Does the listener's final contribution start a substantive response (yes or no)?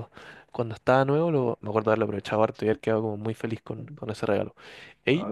yes